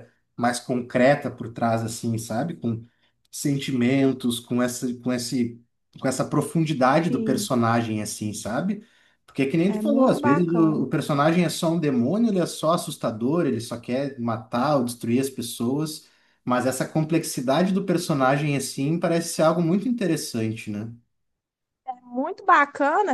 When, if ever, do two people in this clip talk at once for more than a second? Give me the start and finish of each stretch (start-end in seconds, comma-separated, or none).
9.7-10.9